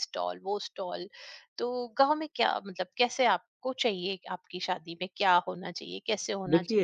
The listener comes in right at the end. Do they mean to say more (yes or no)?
no